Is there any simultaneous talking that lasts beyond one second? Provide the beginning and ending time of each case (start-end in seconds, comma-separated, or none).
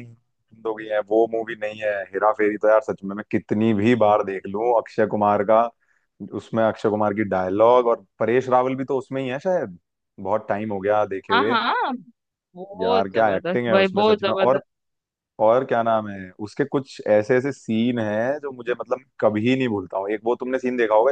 12.8-14.6